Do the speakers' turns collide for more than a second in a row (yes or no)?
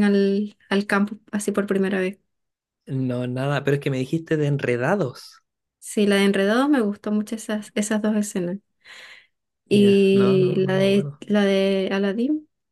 yes